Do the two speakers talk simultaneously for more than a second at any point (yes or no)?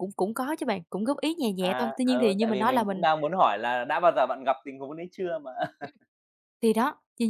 yes